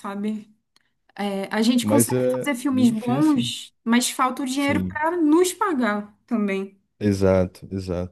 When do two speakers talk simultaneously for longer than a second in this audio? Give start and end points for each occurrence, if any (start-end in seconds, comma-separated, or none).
1.8-3.5